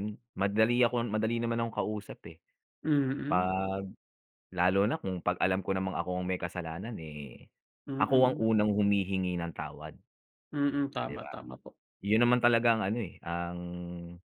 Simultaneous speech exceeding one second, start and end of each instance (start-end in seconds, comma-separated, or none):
none